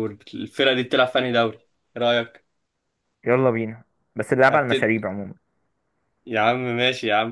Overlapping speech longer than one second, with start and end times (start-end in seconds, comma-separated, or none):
none